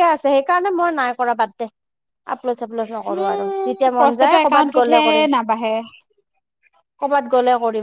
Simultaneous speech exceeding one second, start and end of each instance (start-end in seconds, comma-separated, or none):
3.2-5.3